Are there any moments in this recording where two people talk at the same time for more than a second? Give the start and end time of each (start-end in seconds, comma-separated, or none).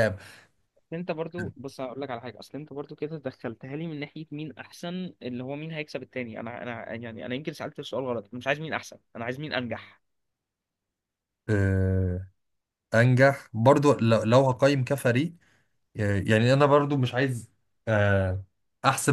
none